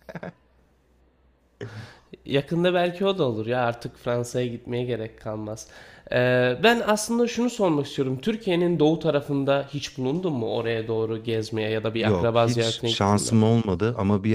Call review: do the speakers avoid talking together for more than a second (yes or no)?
no